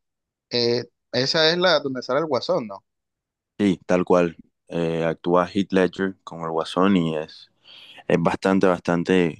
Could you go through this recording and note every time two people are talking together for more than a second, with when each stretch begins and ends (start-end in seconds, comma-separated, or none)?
none